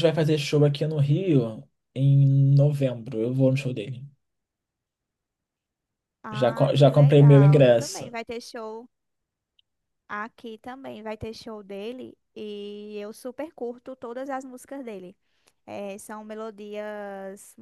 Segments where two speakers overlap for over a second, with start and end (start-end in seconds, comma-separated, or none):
6.3-8.1